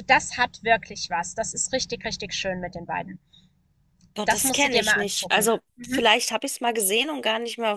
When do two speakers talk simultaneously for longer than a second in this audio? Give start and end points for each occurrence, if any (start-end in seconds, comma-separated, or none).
4.2-6.0